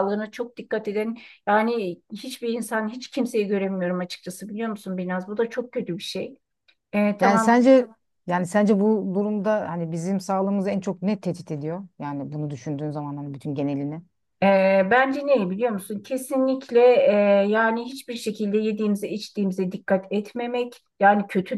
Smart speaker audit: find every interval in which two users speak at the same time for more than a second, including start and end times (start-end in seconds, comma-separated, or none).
none